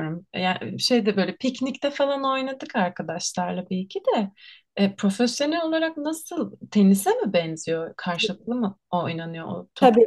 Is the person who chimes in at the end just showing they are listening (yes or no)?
no